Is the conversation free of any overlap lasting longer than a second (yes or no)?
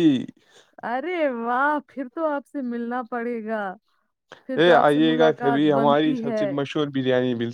no